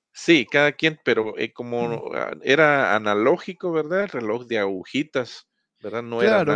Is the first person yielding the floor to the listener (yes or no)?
yes